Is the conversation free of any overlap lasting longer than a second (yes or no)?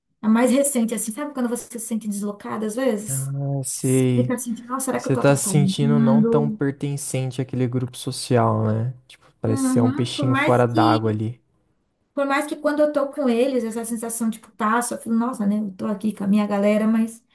no